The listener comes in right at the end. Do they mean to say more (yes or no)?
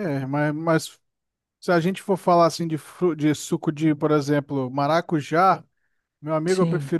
no